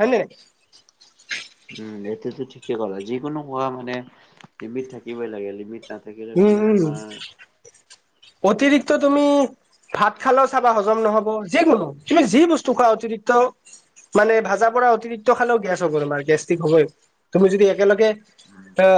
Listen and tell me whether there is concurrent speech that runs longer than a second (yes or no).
no